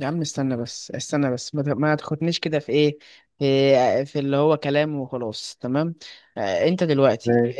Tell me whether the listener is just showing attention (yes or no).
yes